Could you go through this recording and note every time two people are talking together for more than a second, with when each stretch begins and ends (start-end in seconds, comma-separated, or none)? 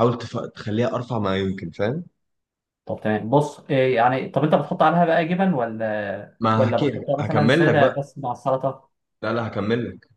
6.4-8.0